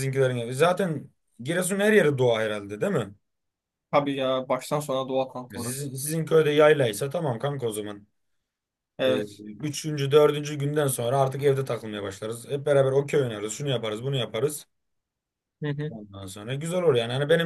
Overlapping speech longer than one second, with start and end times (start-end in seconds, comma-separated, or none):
none